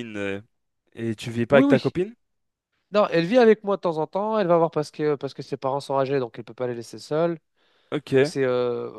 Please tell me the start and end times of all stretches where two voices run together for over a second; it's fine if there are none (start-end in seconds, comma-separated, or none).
none